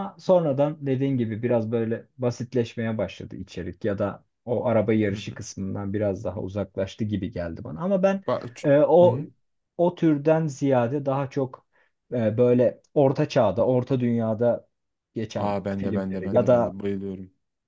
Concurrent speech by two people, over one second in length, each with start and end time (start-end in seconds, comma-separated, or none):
15.4-16.8